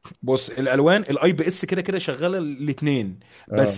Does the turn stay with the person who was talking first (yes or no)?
yes